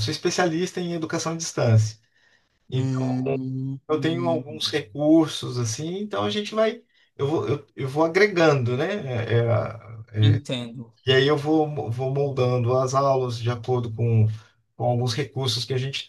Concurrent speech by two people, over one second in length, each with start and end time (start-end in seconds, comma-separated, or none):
none